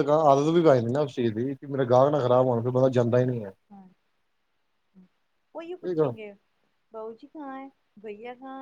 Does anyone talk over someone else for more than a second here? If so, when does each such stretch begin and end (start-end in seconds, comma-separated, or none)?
none